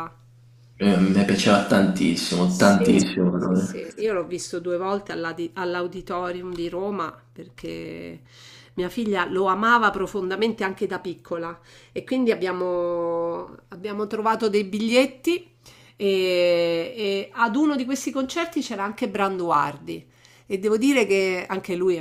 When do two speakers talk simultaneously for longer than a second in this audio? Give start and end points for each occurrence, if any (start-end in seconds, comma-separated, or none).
2.5-3.7